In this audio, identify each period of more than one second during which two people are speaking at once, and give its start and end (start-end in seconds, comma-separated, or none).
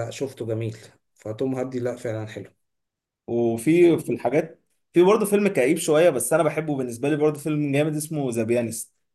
none